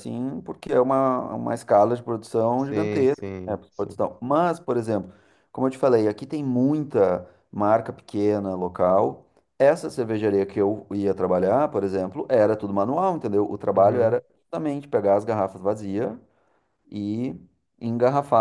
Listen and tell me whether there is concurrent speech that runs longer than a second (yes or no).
yes